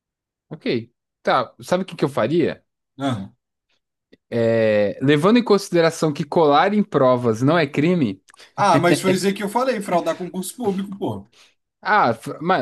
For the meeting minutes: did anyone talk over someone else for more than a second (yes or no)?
no